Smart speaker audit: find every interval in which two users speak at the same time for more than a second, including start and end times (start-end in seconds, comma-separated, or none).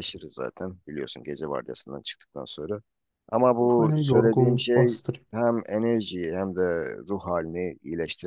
3.7-4.9